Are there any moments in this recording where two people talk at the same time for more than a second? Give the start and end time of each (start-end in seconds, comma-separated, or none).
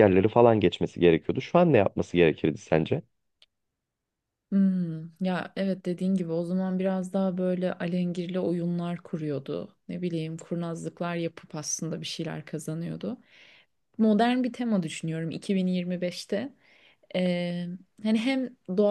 none